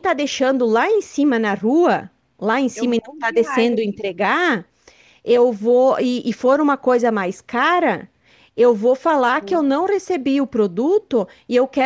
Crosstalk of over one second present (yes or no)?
yes